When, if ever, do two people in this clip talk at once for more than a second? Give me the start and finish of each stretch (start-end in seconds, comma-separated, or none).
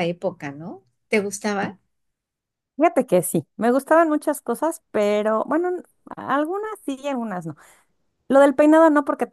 none